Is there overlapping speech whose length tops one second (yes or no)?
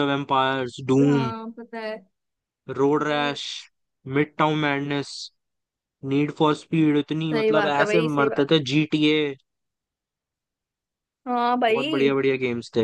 yes